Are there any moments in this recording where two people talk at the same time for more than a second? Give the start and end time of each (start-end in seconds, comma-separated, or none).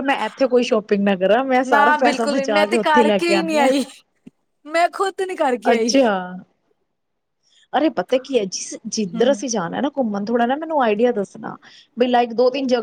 1.7-3.7